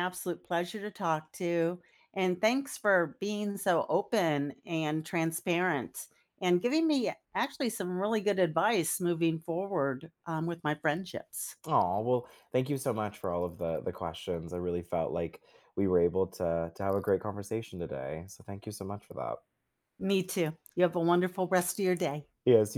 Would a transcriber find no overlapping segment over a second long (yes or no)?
yes